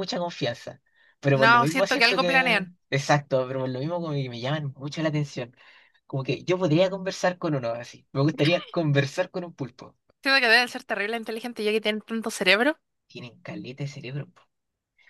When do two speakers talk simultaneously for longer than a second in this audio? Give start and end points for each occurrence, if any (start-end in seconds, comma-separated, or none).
1.4-2.7